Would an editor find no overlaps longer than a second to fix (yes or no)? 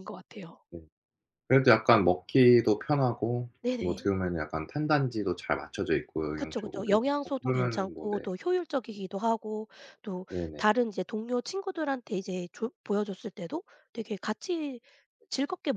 no